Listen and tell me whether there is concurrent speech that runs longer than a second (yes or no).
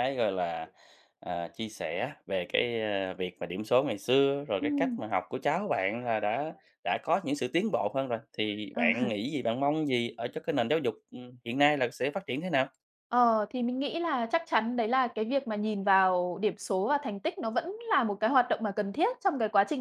no